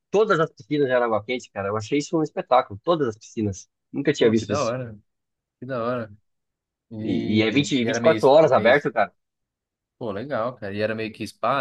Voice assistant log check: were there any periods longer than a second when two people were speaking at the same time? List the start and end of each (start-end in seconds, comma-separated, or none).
7.0-8.7